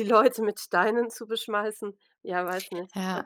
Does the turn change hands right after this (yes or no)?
yes